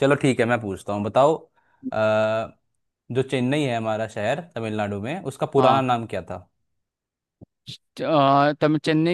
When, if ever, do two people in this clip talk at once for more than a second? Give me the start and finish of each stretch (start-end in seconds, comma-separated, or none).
none